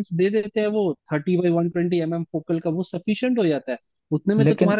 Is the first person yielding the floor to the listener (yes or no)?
no